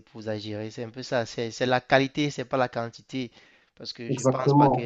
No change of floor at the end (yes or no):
yes